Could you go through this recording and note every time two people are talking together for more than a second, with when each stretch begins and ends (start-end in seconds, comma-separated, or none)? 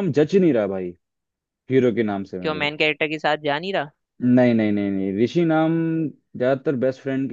none